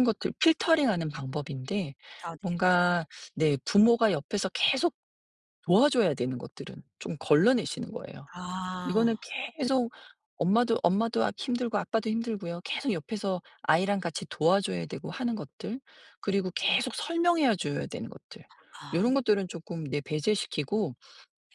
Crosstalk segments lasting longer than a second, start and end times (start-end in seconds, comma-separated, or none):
none